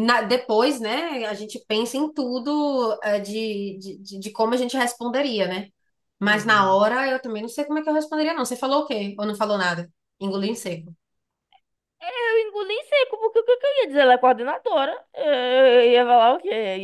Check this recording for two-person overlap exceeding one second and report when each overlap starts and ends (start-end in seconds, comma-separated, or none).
none